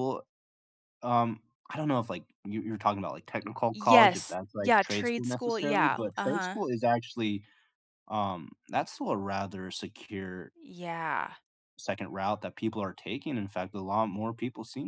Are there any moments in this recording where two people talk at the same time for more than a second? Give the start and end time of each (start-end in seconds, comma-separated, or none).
3.4-6.6